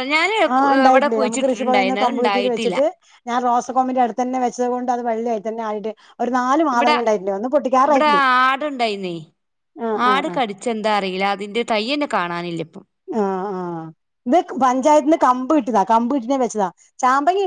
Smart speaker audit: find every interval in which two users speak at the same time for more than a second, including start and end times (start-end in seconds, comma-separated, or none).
0.9-2.8